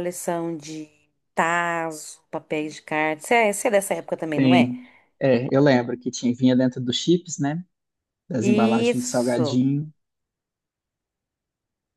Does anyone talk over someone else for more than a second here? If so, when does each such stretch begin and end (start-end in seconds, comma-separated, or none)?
8.4-9.6